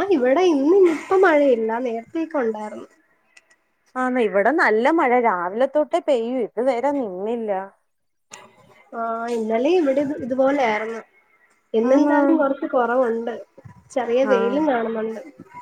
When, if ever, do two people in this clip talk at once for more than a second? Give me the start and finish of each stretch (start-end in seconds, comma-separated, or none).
none